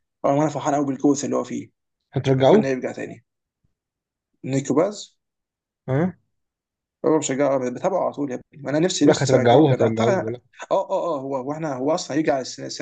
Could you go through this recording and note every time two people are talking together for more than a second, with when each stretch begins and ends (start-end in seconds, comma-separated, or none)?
9.0-10.3